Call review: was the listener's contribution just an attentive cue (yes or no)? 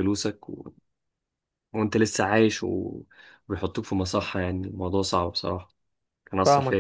no